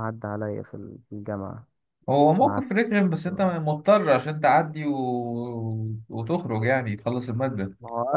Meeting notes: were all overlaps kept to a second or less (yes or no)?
yes